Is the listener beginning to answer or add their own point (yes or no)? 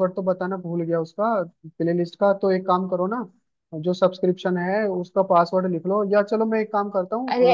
yes